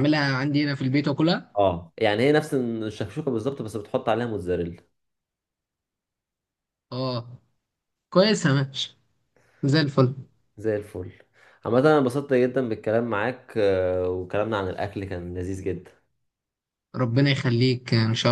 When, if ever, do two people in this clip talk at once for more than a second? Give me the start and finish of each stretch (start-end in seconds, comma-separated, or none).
none